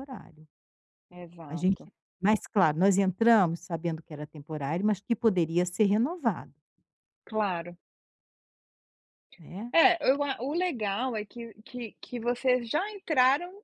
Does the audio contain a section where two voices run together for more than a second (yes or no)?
no